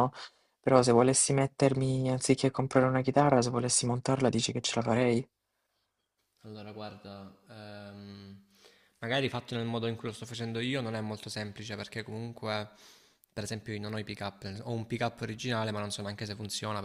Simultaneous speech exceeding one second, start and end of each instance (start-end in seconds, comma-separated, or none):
none